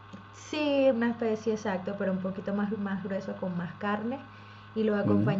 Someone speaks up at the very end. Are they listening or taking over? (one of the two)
listening